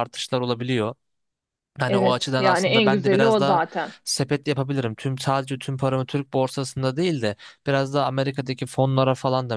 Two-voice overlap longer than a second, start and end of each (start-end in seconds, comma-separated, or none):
1.9-3.6